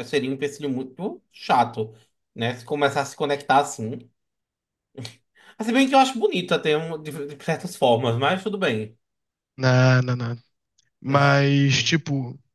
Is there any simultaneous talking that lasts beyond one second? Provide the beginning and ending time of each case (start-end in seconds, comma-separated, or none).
none